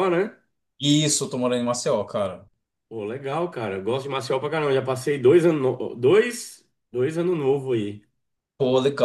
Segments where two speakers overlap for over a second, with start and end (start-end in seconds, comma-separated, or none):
none